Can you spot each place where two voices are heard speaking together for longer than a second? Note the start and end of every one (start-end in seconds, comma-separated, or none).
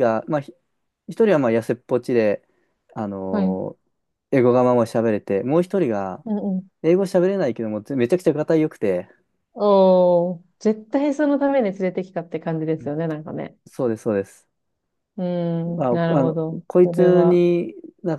15.8-17.4